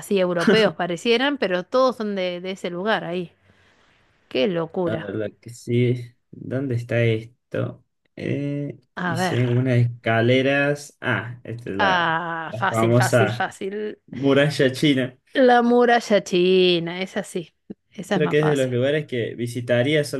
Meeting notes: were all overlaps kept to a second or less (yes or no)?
no